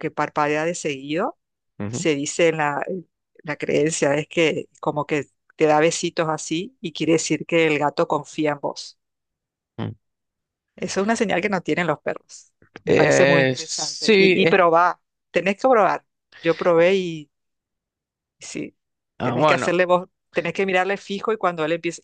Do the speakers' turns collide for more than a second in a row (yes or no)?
yes